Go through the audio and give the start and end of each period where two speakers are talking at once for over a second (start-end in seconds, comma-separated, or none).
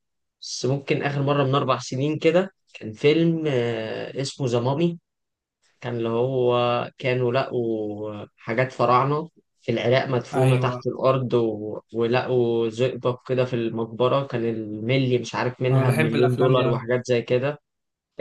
15.7-16.9